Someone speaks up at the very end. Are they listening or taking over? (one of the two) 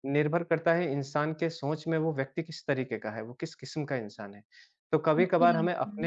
listening